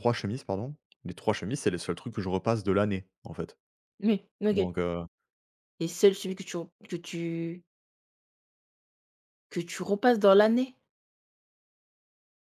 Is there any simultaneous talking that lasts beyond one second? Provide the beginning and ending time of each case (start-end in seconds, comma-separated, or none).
none